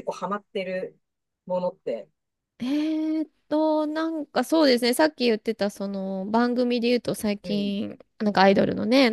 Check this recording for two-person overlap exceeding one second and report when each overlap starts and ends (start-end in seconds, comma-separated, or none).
none